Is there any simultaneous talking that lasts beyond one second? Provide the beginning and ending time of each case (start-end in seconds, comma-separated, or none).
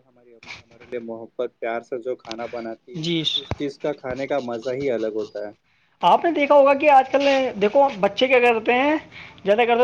none